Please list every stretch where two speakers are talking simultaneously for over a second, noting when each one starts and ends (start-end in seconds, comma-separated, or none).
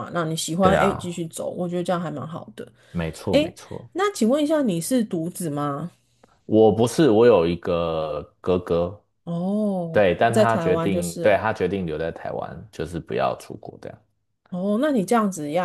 9.9-11.4